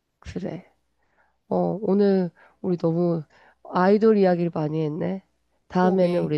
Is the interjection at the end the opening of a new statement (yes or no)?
no